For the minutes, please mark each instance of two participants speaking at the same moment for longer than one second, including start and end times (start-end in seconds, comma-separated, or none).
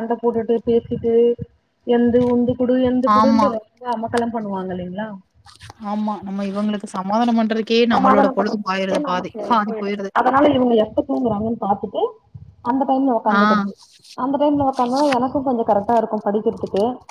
7.9-10.1